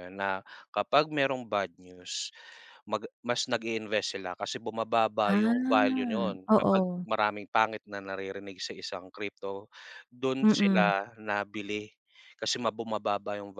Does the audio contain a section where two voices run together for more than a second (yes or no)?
yes